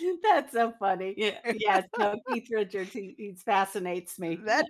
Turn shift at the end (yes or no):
yes